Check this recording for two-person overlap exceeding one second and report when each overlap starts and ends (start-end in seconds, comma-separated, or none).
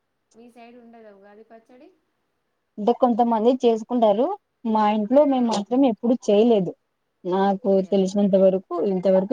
none